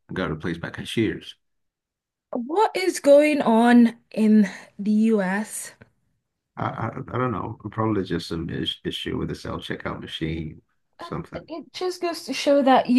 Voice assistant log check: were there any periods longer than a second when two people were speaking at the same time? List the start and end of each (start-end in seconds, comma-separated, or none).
none